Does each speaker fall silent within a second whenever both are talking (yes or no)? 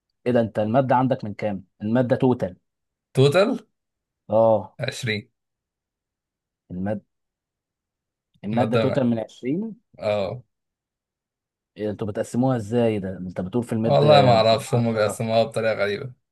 no